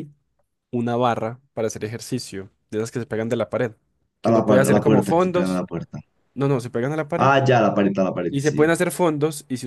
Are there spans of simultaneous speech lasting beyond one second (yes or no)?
yes